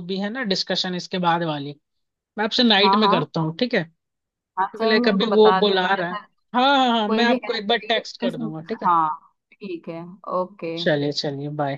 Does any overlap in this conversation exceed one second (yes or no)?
yes